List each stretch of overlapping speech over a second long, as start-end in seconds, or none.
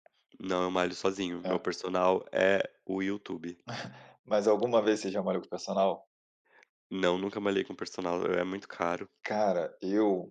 none